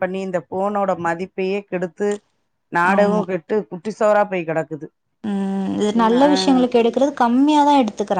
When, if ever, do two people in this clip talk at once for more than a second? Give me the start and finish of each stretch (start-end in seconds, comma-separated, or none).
none